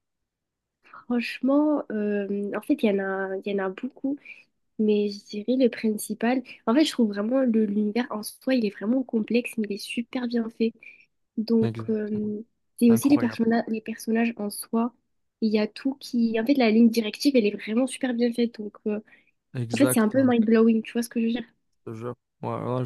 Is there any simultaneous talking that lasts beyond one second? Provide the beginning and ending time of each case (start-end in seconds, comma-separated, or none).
none